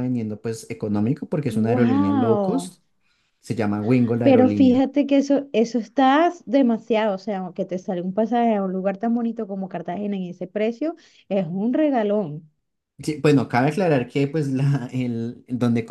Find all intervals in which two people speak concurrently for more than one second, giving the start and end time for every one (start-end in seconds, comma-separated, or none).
1.5-2.7